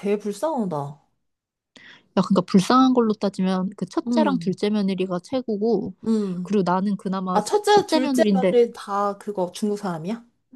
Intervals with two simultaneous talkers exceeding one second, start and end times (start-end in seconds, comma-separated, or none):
7.3-8.5